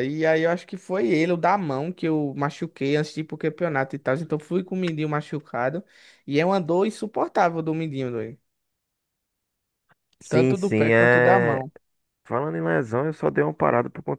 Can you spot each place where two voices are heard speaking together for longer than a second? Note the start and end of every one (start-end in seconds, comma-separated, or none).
10.3-11.6